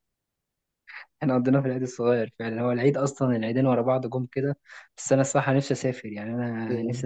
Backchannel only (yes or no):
no